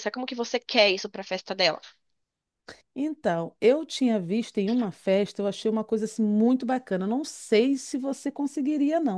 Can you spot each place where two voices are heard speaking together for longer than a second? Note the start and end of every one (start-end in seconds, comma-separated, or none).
none